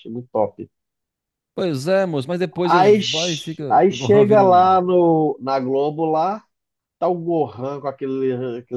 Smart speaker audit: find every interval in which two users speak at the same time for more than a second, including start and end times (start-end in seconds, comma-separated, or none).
2.7-4.7